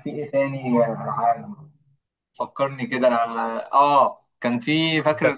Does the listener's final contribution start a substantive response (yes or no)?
no